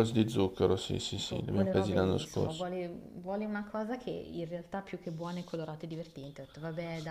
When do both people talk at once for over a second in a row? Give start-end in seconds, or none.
1.2-2.7